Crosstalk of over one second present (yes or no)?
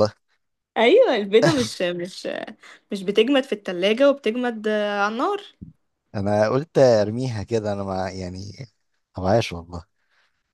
no